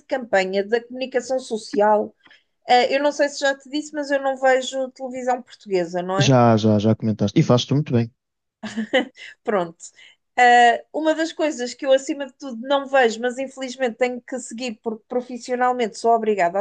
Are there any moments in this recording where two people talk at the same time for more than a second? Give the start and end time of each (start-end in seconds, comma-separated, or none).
none